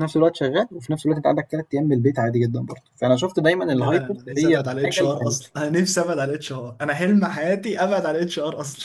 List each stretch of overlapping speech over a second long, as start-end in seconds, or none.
3.7-5.3